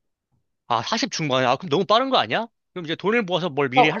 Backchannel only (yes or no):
no